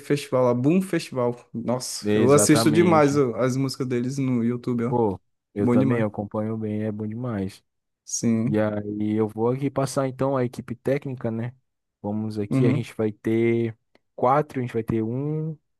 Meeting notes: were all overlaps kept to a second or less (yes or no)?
no